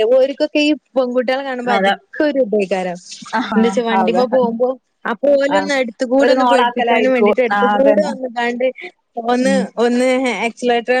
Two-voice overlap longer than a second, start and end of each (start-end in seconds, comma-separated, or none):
6.2-8.1